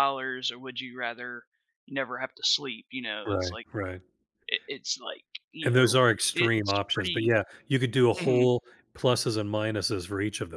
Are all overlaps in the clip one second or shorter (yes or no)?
no